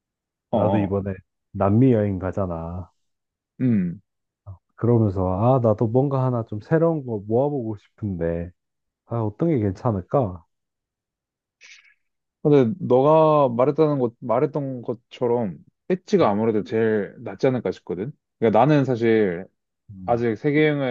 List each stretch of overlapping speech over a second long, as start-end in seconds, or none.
none